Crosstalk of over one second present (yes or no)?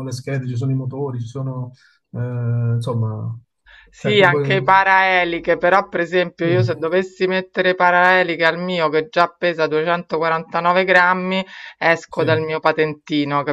no